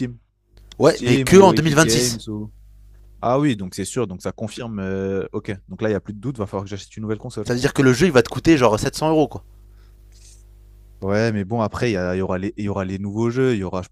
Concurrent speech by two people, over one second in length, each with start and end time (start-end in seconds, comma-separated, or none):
0.8-2.2